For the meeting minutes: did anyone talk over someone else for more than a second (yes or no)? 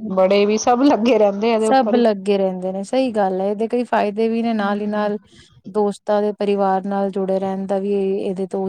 no